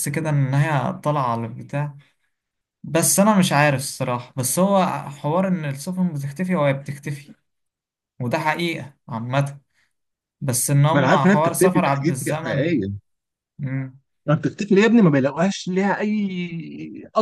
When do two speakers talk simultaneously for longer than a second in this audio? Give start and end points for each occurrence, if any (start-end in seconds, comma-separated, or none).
10.9-12.8